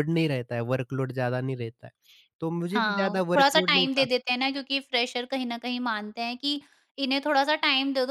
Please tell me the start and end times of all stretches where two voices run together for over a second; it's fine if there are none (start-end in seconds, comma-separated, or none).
2.7-4.1